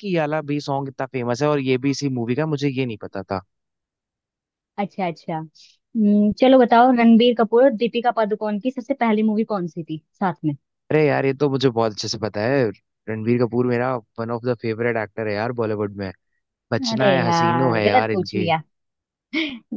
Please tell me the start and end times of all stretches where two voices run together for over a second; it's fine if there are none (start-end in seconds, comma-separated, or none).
16.9-18.5